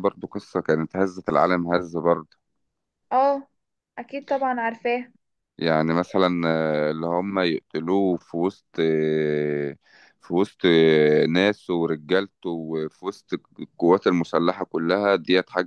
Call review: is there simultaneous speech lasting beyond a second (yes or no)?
no